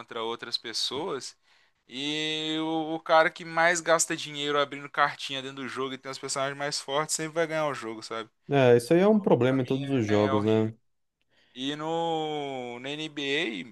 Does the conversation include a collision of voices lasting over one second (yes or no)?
yes